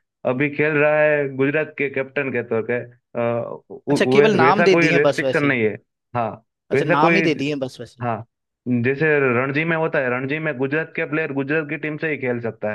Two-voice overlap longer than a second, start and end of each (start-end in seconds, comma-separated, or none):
3.9-5.6